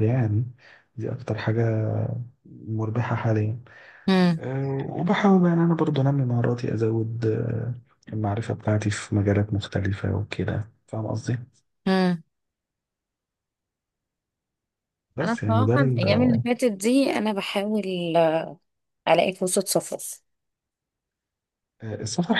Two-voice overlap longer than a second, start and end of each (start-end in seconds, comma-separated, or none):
15.2-16.4